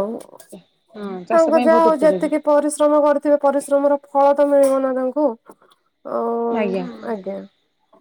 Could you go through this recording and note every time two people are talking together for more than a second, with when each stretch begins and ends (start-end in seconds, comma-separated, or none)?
0.5-2.3